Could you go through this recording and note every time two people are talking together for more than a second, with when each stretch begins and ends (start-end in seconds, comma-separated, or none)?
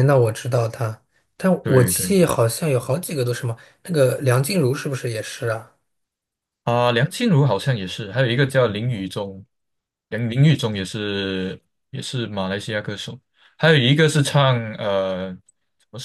none